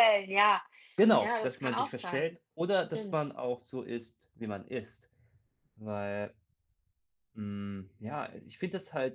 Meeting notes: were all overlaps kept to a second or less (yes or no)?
no